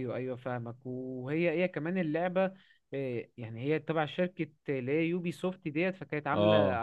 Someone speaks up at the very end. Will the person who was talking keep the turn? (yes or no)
yes